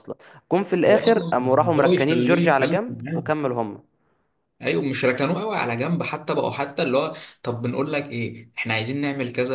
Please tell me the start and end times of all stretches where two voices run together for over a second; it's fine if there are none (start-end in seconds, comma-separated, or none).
0.9-3.2